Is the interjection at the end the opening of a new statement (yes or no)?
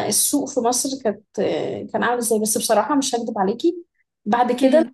no